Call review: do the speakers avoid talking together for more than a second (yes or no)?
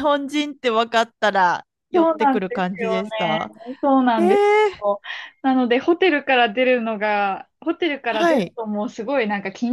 no